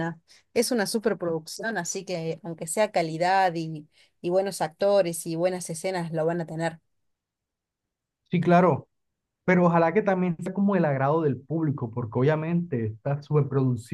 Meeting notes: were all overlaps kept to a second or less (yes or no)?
yes